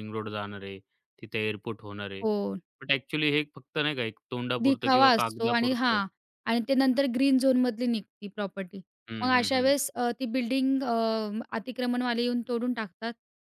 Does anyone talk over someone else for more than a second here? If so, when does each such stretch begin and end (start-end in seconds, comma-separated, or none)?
4.6-6.0